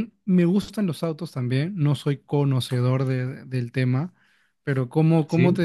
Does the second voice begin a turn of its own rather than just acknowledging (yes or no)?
no